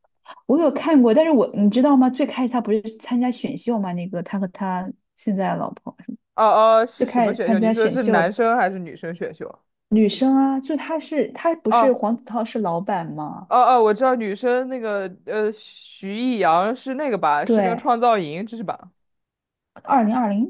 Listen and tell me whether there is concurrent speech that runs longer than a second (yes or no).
yes